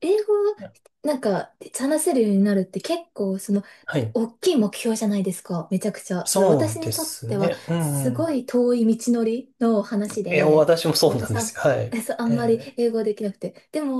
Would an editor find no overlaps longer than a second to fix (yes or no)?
no